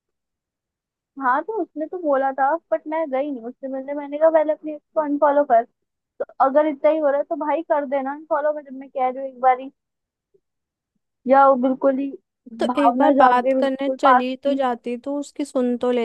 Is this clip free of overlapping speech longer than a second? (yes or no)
no